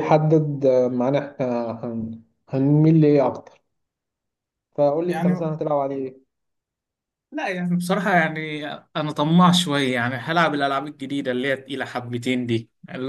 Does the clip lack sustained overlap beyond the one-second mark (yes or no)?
yes